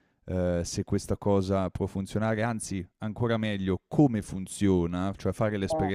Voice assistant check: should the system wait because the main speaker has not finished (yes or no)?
yes